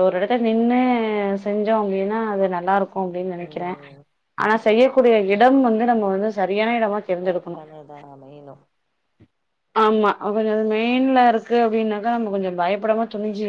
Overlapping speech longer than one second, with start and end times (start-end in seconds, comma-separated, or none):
none